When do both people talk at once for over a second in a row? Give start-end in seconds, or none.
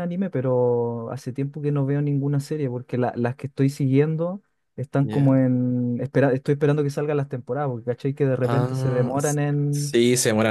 8.4-10.0